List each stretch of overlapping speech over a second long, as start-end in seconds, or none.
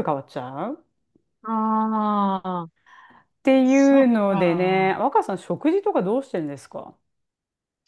3.6-5.0